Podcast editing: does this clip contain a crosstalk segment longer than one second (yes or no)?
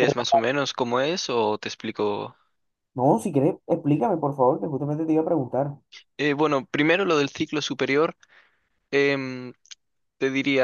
no